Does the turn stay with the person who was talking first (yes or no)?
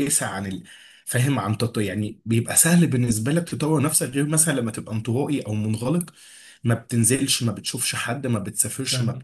yes